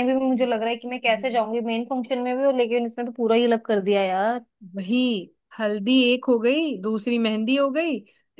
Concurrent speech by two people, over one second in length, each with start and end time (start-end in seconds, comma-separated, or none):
none